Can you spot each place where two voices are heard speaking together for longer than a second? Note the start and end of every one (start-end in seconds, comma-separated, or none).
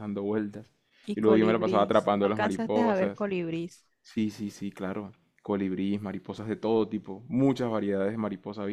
1.1-3.2